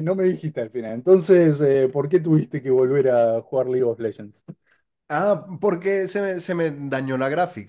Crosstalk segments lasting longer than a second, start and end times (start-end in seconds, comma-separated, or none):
none